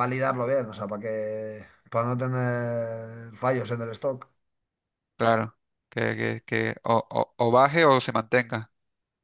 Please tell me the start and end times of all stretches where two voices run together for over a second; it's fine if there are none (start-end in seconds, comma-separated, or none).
none